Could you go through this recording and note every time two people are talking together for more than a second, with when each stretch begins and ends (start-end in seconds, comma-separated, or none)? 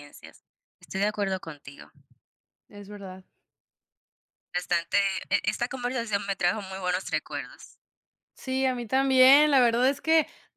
none